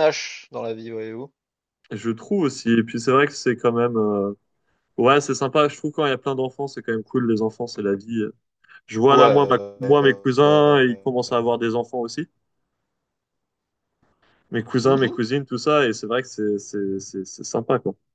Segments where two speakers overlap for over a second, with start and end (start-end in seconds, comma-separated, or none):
9.1-10.8